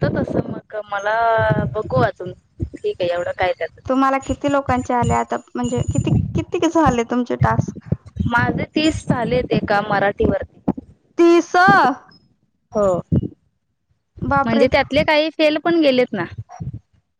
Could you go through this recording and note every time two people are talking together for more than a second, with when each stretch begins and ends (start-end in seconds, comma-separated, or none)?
none